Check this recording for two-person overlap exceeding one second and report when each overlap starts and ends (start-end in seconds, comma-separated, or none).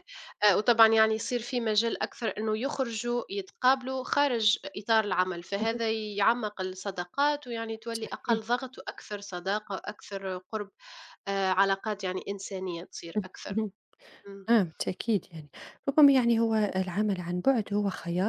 none